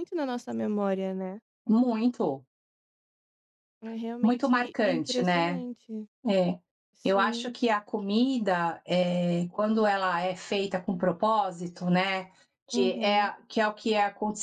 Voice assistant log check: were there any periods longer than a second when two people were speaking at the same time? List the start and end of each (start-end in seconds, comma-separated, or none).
4.2-5.6